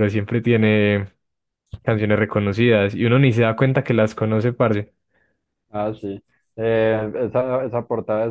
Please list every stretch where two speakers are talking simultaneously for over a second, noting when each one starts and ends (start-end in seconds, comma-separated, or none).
none